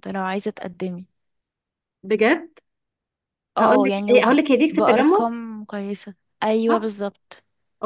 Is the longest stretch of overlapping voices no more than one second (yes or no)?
no